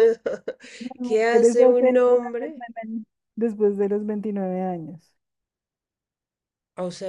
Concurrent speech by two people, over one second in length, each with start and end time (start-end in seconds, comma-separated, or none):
1.0-2.6